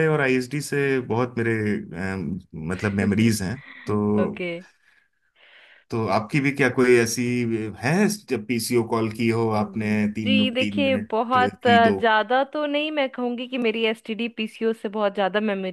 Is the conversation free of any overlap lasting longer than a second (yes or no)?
no